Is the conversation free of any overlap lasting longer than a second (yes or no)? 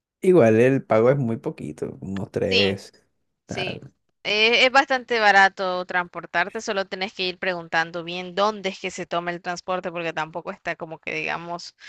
yes